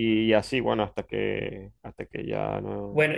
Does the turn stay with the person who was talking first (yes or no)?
no